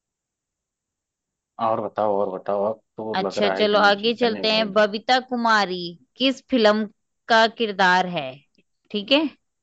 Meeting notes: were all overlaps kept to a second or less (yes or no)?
no